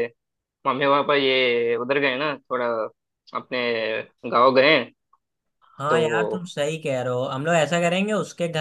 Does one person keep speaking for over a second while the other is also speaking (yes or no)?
no